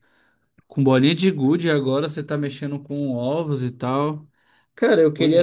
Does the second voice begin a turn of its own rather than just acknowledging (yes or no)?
no